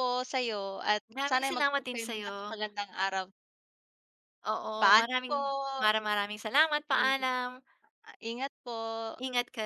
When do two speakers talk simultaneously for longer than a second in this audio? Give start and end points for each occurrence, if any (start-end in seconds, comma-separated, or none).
1.1-2.6